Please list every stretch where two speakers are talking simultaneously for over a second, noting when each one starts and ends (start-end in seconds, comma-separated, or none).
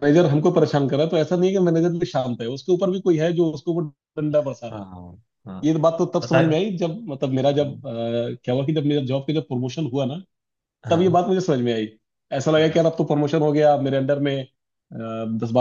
none